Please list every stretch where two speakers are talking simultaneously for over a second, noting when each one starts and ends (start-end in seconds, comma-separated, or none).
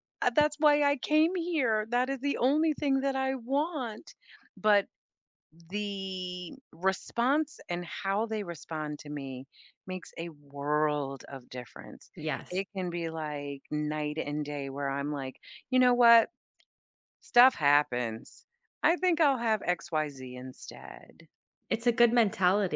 none